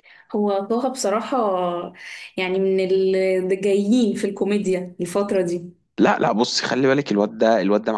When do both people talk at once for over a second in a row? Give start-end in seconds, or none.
none